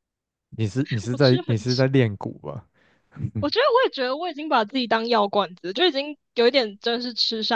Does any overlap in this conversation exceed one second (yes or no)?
no